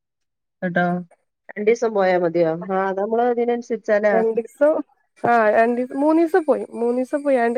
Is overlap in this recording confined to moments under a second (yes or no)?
yes